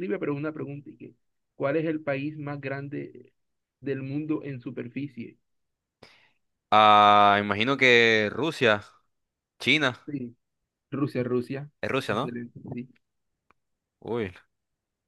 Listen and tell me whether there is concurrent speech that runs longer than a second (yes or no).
no